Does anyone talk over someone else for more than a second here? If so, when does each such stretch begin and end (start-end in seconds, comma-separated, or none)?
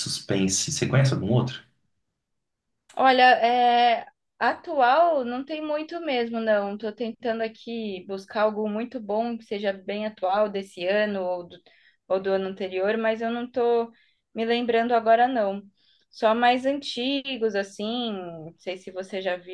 none